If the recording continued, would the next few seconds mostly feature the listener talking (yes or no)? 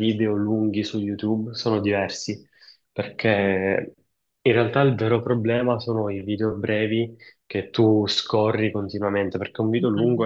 no